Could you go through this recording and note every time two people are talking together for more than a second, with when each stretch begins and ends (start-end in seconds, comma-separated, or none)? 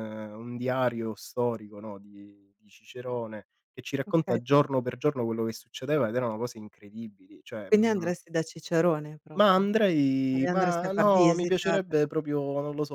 10.3-12.3